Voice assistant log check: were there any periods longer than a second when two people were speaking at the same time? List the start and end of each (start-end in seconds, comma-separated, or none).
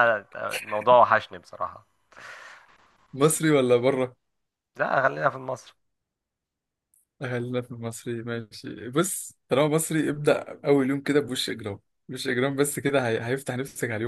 none